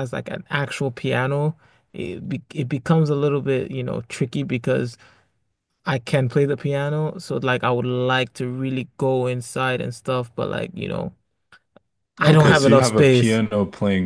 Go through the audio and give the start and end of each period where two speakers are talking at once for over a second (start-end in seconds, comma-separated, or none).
12.2-13.4